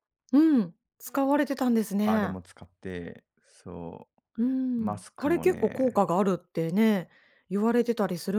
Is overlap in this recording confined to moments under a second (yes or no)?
no